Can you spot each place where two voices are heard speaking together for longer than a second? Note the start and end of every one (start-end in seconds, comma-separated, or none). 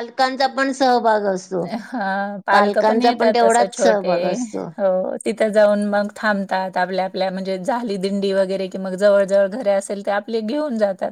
2.5-4.1